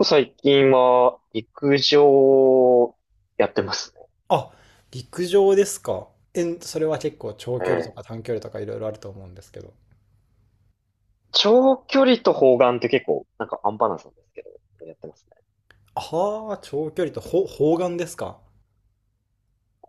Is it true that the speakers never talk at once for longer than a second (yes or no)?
yes